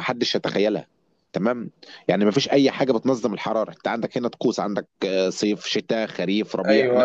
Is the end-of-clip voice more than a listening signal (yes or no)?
yes